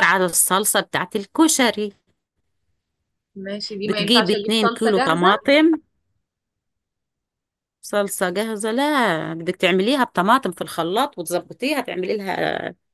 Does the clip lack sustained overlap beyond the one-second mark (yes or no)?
no